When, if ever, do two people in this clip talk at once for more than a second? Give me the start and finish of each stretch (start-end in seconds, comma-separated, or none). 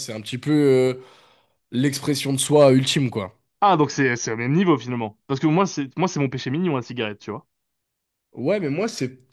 none